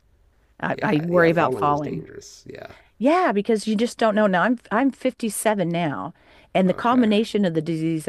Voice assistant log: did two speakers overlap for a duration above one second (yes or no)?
yes